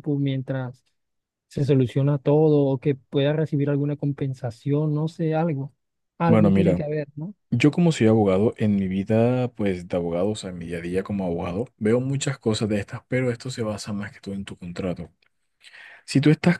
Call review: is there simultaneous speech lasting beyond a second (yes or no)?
no